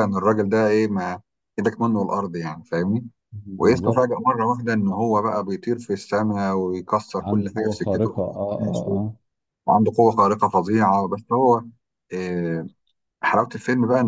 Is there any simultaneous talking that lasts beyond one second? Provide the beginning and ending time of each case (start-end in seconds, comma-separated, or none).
7.2-8.9